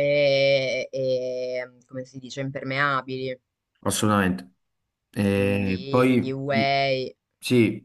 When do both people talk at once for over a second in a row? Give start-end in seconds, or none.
5.3-6.7